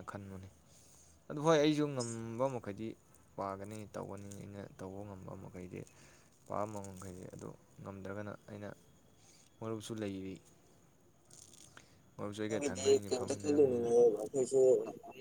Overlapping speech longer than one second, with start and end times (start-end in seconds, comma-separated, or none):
12.5-13.9